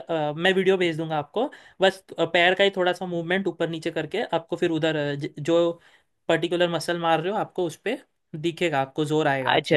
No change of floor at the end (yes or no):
no